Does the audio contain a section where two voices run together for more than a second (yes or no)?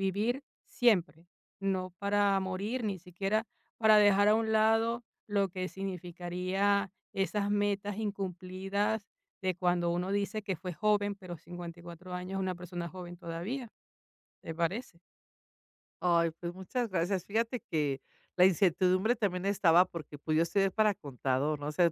no